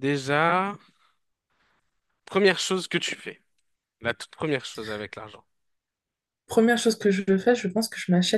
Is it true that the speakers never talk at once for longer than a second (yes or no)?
yes